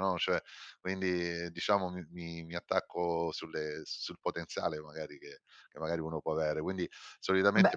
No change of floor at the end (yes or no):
yes